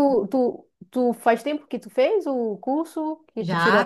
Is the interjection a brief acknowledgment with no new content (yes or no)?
no